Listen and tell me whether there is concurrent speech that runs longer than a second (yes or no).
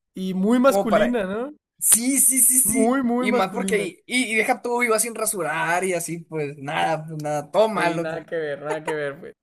yes